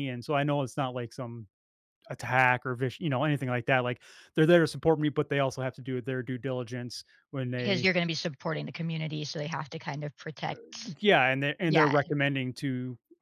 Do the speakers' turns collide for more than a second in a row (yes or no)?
no